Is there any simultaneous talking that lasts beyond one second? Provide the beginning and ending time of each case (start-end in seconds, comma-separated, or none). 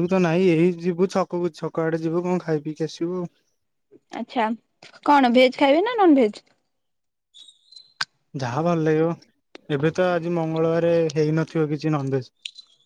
none